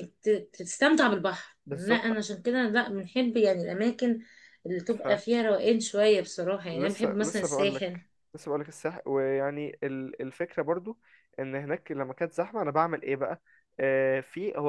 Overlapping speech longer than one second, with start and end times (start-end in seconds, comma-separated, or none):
6.7-8.0